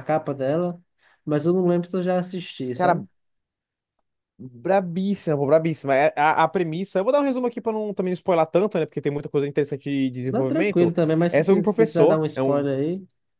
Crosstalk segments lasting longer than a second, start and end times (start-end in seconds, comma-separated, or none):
10.3-12.7